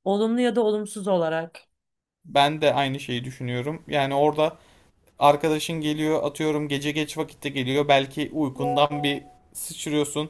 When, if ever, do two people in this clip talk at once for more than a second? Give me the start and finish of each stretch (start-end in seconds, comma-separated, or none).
none